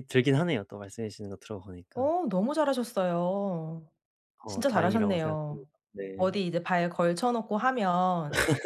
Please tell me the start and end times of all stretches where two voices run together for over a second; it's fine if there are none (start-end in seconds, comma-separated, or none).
4.5-5.7